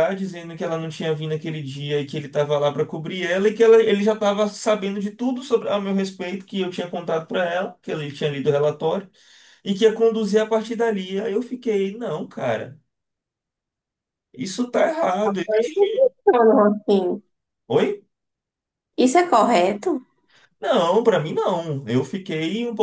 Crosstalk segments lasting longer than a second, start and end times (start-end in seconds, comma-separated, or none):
none